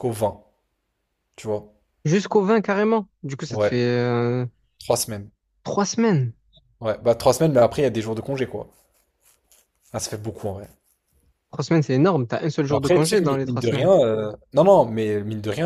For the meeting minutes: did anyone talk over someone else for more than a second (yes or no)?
yes